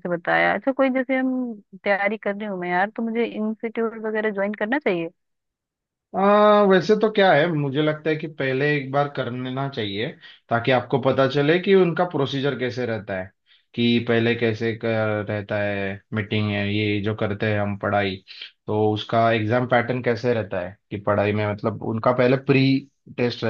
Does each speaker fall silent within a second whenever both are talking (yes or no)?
yes